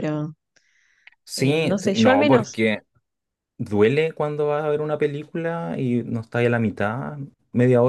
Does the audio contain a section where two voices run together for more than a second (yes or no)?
yes